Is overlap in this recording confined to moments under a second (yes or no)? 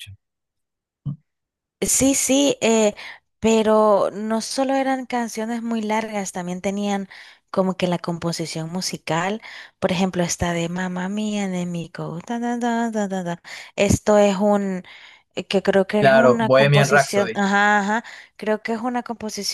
no